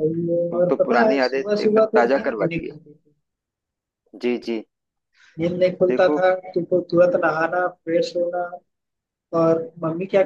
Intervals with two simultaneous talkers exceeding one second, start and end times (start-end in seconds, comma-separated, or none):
0.5-2.8